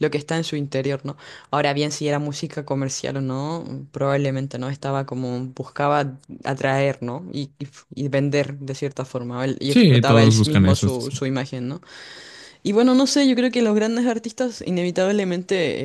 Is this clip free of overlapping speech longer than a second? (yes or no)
no